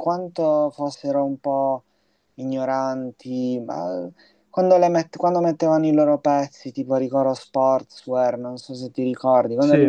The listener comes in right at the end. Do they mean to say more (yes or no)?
no